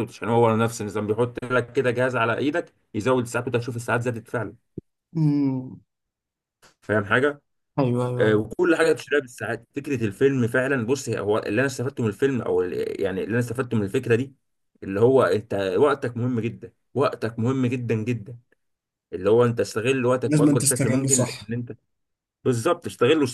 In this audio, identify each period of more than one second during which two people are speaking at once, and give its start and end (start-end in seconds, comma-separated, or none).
20.2-21.5